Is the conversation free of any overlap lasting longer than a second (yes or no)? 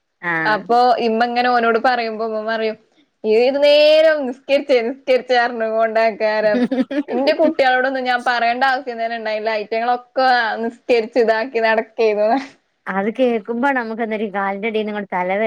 yes